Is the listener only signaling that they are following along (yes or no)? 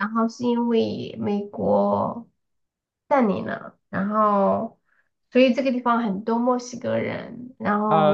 no